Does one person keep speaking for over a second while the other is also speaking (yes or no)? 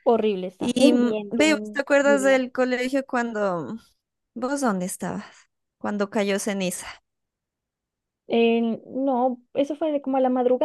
yes